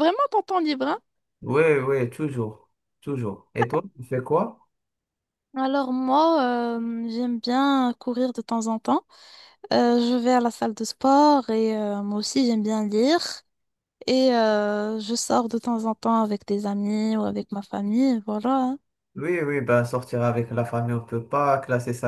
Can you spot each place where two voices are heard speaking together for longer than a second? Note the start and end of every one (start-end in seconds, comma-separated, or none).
none